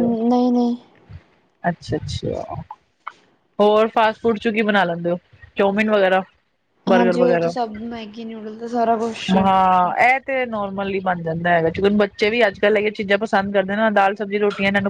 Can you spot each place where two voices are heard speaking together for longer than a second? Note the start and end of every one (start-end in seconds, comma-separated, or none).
none